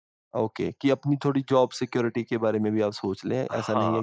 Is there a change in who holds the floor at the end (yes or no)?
yes